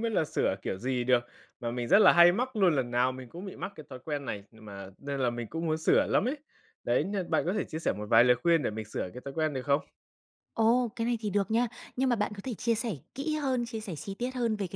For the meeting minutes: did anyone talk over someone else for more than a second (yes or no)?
no